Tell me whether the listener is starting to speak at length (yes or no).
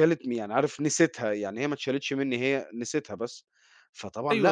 yes